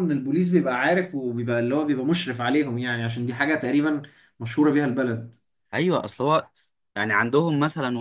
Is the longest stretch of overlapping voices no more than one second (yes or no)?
yes